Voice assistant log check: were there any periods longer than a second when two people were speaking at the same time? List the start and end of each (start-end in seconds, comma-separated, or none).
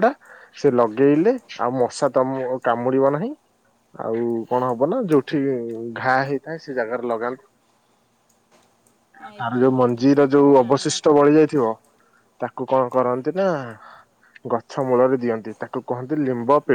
9.4-11.0